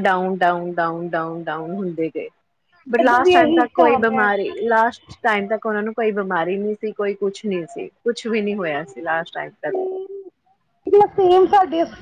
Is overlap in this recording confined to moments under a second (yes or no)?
no